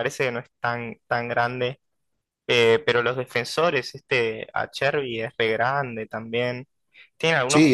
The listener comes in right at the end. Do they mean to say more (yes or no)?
yes